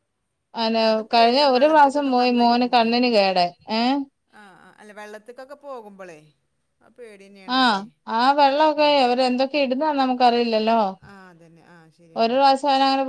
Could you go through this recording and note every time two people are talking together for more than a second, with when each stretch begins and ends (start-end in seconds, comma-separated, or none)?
0.8-2.9